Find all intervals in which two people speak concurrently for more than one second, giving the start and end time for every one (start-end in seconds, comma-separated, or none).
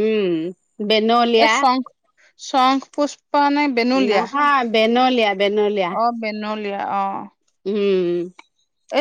none